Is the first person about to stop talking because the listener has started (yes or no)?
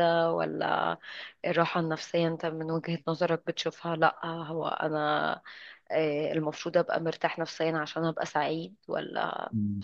yes